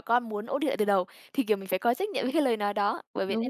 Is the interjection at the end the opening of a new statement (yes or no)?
no